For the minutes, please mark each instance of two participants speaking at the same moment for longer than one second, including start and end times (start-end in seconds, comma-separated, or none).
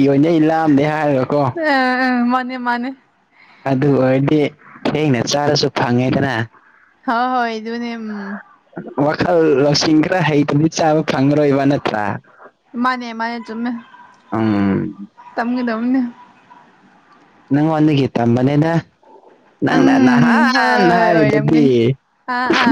19.8-21.7